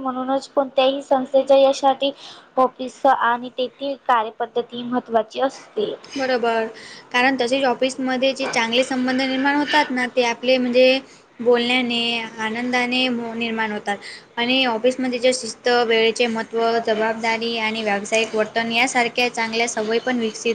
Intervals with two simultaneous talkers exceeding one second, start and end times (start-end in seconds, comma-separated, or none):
none